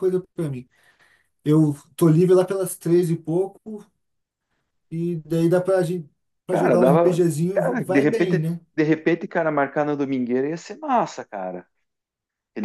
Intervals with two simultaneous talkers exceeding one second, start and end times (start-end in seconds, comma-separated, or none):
6.5-8.6